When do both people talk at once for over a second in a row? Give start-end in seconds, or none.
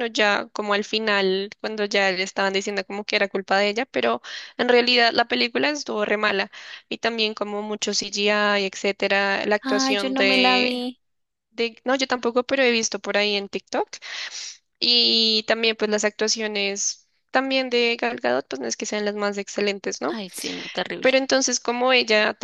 9.6-10.8